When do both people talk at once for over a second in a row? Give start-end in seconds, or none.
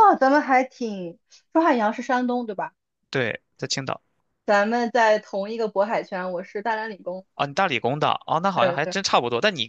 none